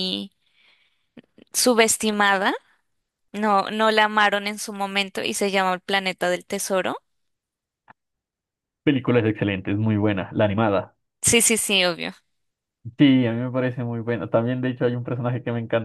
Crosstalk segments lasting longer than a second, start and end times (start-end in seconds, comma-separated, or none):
none